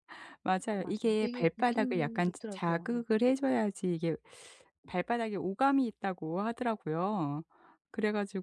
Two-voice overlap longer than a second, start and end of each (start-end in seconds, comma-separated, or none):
0.8-2.9